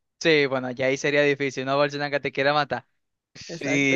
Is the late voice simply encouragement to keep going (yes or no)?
no